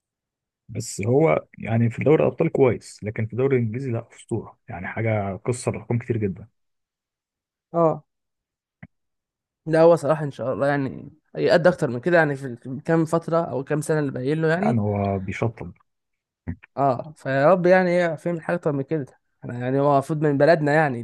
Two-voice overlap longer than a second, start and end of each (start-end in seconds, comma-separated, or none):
none